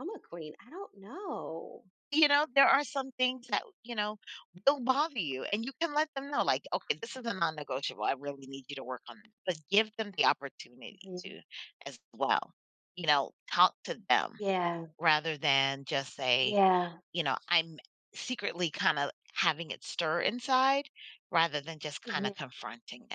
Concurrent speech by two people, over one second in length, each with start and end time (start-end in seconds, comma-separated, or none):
none